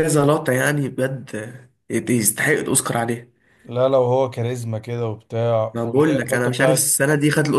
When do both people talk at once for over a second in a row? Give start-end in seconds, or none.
5.7-7.0